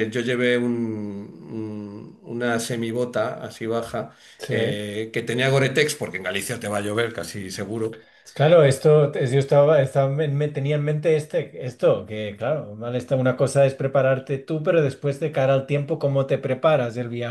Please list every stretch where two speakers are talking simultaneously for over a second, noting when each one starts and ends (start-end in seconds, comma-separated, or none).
none